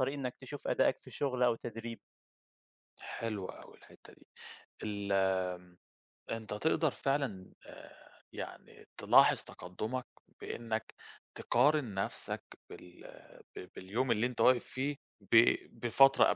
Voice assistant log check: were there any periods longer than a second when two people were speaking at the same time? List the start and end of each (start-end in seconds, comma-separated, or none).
none